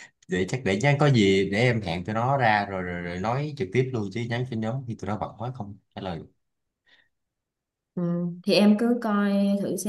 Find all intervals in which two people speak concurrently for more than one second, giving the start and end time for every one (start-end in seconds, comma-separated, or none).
none